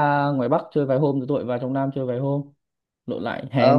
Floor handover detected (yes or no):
yes